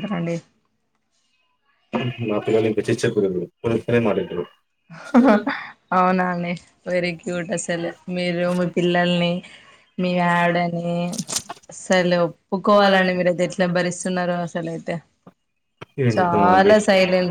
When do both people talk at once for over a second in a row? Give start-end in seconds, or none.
12.7-14.4